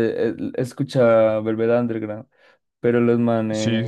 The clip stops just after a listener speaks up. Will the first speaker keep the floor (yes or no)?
yes